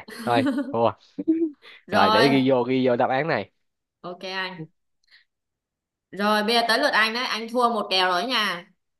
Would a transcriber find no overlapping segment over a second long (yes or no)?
yes